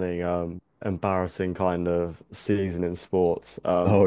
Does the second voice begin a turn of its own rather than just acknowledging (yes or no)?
no